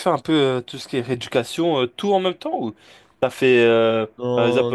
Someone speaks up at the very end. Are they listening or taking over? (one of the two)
listening